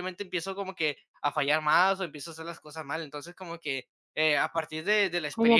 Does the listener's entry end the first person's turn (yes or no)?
yes